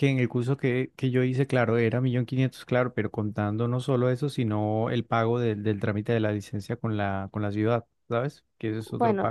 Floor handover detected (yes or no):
yes